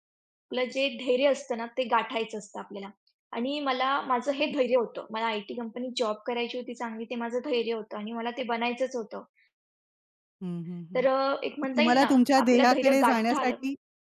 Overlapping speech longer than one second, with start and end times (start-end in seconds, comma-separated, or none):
11.8-13.5